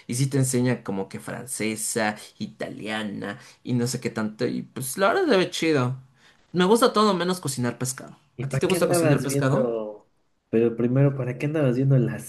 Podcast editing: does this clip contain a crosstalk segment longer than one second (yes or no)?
yes